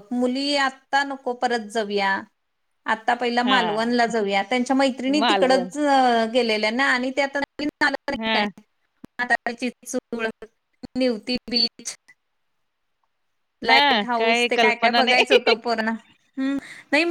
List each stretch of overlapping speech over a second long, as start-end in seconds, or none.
13.7-15.4